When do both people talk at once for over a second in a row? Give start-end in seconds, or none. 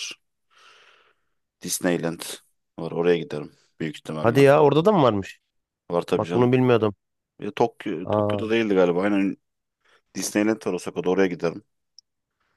none